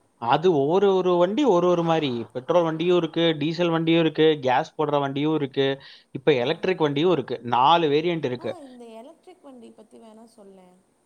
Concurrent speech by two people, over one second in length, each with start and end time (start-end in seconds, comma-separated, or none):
none